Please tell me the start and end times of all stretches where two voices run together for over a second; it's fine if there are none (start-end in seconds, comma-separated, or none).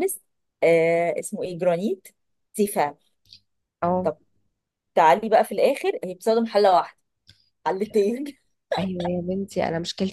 none